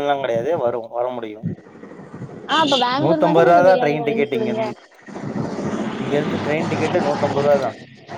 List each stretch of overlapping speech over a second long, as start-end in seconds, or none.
3.0-4.6